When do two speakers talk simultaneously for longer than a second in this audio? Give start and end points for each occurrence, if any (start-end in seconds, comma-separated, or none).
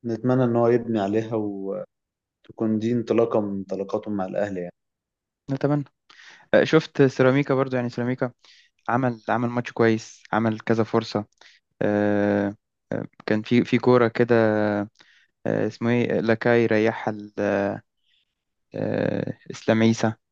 none